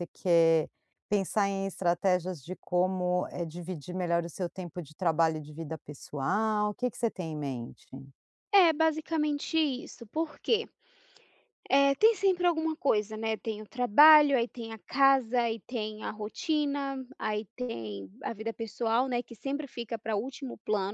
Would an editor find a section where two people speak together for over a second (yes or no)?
no